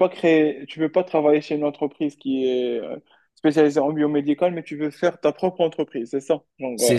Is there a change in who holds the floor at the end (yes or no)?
yes